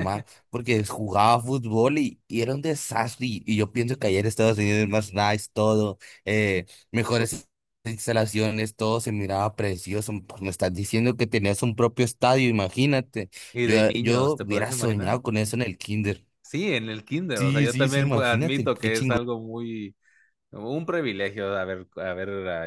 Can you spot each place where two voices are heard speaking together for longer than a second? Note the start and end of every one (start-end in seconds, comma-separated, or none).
13.5-15.2, 17.3-19.2